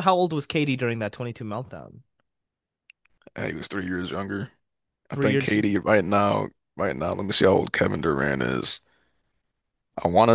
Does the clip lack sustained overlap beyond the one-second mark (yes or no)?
yes